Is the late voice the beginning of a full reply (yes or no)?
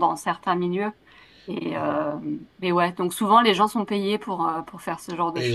yes